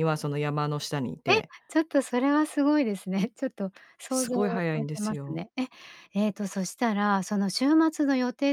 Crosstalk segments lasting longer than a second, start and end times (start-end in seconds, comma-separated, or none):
4.1-5.4